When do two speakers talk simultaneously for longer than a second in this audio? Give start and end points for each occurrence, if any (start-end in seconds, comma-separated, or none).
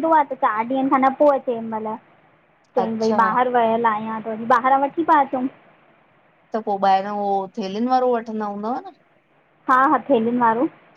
none